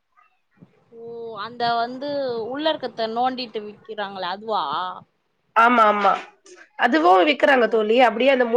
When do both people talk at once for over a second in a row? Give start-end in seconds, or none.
none